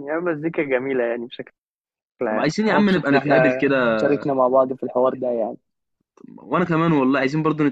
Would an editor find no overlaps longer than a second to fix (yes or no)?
no